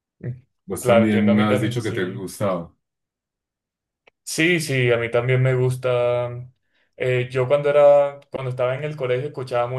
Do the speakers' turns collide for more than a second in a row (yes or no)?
yes